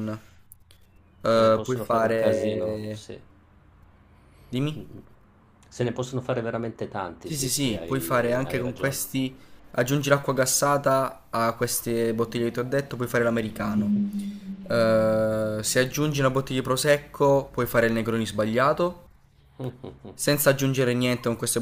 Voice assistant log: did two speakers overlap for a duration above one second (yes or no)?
yes